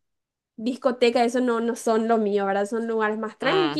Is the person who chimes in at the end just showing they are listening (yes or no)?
yes